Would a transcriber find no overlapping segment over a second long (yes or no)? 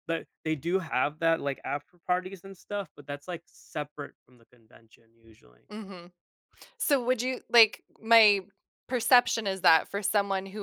yes